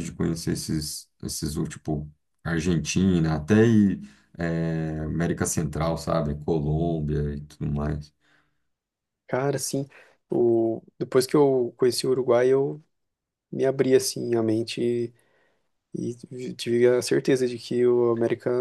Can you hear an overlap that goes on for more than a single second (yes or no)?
no